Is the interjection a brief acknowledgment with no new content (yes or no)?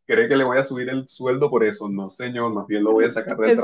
no